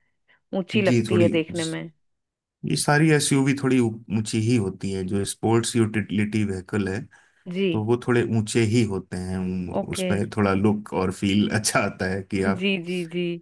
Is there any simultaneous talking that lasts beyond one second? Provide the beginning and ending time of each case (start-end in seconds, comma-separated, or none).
none